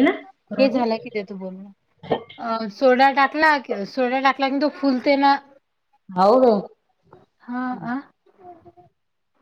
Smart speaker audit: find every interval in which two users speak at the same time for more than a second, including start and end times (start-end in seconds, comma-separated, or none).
none